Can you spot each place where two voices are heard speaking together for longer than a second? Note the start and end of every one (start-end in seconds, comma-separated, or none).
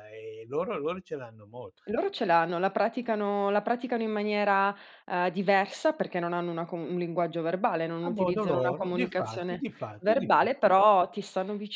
8.0-10.7